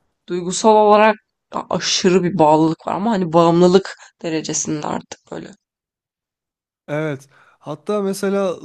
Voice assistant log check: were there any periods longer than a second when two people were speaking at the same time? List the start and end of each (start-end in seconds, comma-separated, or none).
none